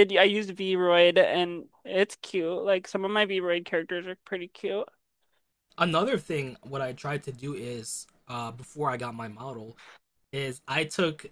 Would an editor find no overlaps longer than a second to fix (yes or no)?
yes